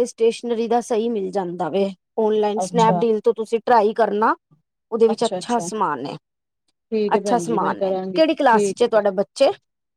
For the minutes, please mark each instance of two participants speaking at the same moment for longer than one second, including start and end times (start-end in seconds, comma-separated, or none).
7.1-9.2